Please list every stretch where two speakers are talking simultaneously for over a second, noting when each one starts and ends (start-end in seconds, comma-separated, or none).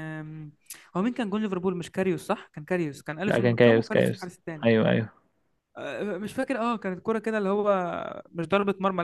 3.3-4.7